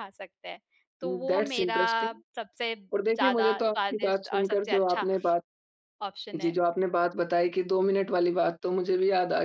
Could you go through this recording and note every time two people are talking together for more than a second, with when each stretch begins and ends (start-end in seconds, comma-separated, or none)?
2.9-5.1